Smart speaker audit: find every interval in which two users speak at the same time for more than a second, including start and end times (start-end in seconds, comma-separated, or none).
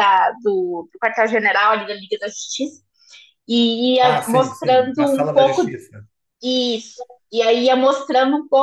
4.0-5.6